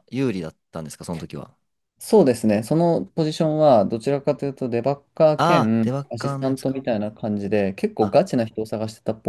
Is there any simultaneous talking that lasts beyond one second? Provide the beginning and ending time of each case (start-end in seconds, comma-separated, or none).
5.4-6.8